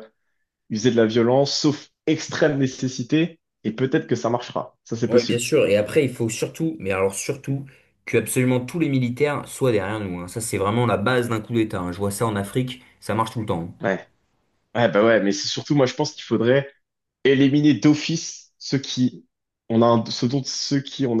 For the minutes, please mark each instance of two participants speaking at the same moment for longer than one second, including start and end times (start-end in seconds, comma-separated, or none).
none